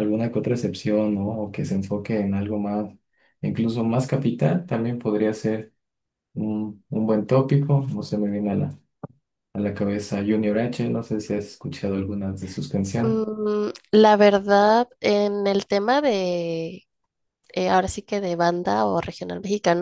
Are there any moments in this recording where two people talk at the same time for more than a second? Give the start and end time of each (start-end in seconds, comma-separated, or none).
none